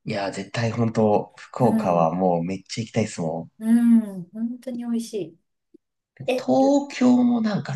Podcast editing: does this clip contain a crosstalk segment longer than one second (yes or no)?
no